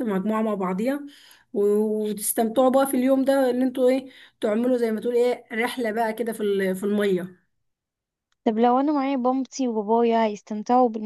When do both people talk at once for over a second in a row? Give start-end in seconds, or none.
none